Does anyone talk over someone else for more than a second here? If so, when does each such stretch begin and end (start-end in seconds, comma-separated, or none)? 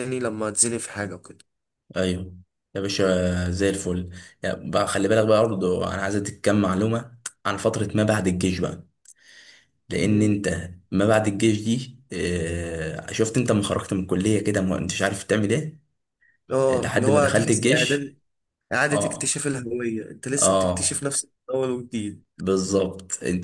16.7-18.2